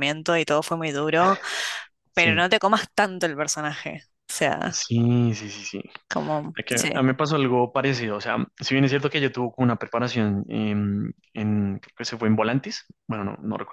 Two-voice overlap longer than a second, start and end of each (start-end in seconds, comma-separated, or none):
none